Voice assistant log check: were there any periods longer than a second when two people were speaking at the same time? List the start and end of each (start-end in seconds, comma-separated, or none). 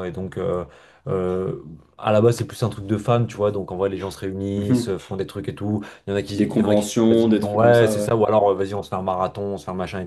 6.3-8.1